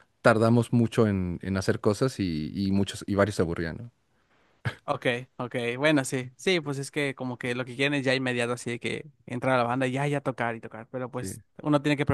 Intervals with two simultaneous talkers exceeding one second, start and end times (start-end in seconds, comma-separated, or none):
none